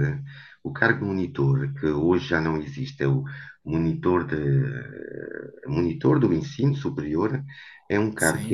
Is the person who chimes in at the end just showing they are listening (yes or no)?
yes